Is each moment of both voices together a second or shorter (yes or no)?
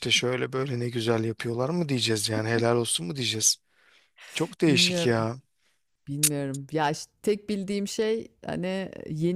yes